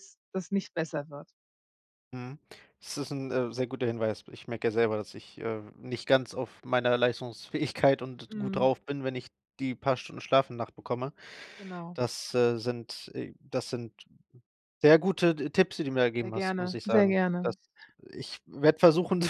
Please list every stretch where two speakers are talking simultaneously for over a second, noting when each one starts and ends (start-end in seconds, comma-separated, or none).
16.2-17.6